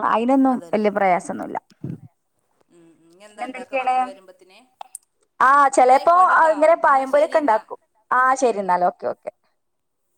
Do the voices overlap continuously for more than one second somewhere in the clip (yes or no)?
no